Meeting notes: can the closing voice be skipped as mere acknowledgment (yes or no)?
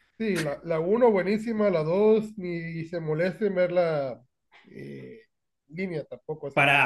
no